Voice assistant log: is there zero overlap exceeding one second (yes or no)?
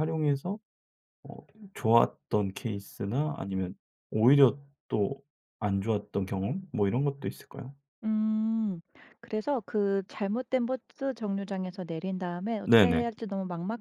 yes